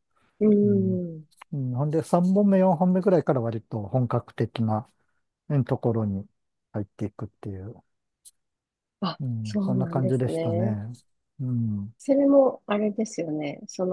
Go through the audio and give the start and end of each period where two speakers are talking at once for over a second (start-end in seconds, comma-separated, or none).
9.2-10.8